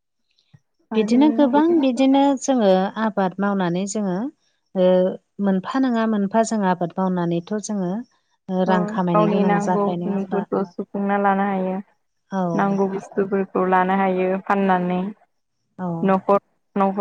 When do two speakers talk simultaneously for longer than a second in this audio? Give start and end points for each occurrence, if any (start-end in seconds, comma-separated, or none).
8.7-10.4